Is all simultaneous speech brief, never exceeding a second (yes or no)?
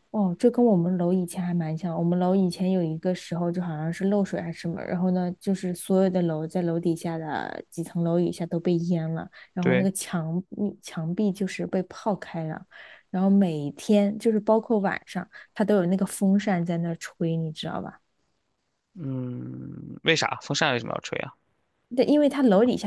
yes